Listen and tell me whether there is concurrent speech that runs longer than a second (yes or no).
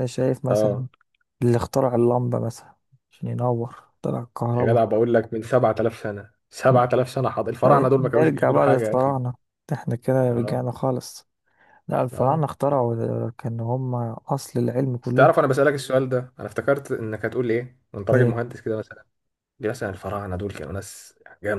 yes